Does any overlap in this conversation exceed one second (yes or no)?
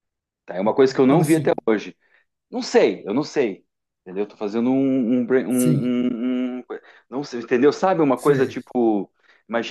no